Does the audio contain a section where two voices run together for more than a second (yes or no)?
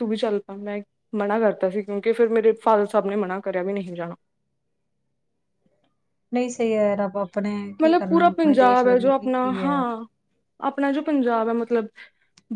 yes